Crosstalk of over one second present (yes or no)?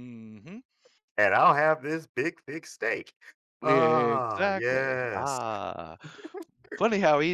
yes